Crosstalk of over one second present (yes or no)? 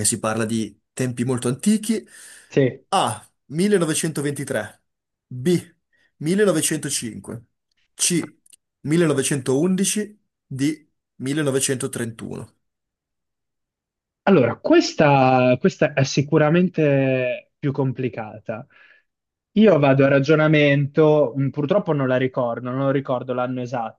no